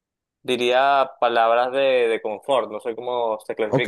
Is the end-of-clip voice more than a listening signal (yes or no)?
yes